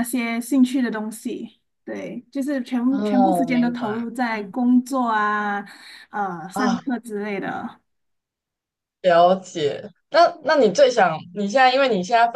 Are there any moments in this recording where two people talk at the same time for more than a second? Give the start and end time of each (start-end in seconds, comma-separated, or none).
2.9-4.5